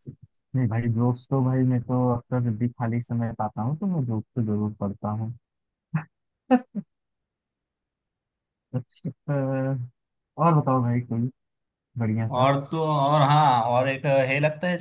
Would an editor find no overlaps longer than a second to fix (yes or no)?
yes